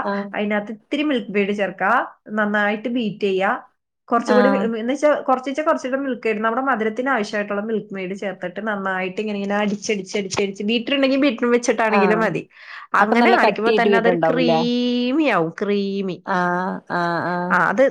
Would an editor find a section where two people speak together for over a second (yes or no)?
yes